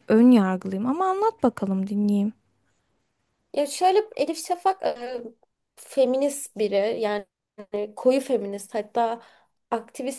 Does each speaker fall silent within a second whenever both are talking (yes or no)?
yes